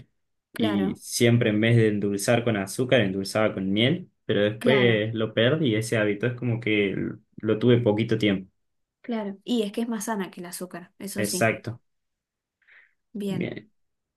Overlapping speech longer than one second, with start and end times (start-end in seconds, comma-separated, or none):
none